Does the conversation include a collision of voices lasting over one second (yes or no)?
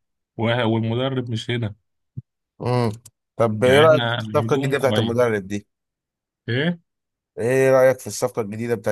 yes